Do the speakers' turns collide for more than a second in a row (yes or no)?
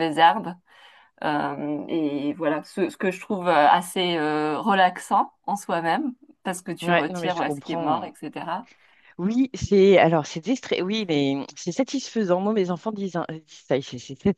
yes